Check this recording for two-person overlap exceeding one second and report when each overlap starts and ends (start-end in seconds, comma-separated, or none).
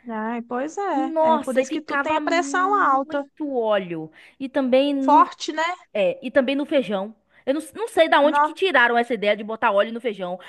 0.9-3.2